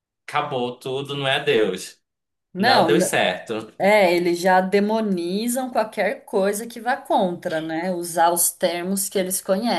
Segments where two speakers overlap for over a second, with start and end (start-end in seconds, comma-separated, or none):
none